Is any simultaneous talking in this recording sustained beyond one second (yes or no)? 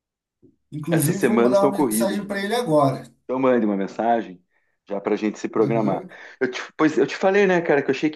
yes